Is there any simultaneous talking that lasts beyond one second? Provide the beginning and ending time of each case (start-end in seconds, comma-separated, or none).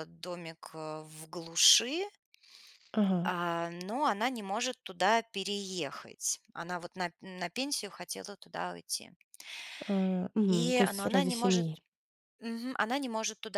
10.5-11.7